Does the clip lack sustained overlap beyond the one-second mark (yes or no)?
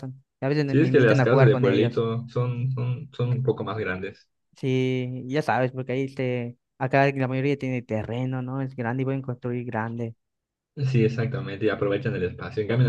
no